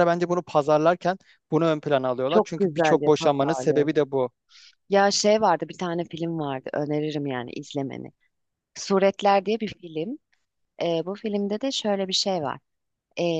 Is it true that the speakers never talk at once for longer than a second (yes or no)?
no